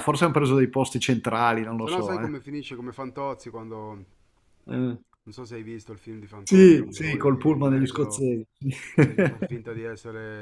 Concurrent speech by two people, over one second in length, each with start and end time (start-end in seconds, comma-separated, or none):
6.4-8.2